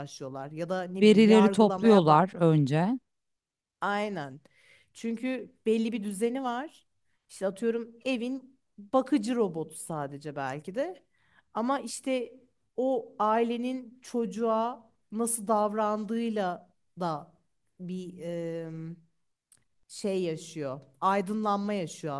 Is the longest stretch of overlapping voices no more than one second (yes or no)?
no